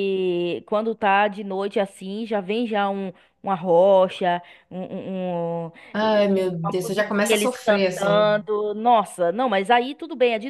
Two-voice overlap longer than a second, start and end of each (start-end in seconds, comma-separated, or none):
5.9-8.3